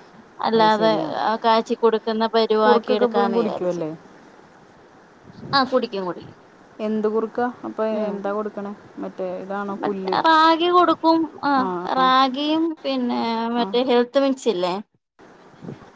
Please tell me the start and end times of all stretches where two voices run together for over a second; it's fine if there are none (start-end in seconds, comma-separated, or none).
2.6-3.8